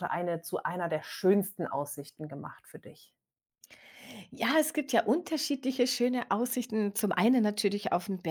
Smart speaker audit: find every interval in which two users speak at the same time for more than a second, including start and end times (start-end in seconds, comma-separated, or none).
none